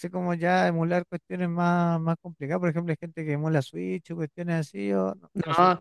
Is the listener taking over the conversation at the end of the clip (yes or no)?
yes